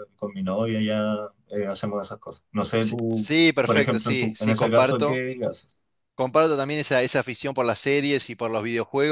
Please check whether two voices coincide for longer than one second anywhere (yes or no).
yes